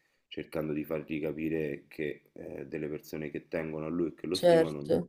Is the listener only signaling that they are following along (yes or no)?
yes